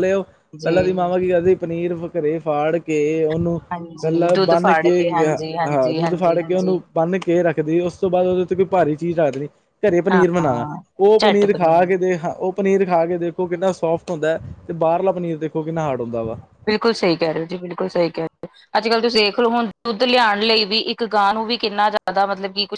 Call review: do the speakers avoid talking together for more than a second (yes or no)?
no